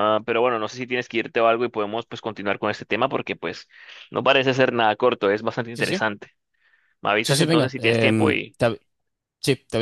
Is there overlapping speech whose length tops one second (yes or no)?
yes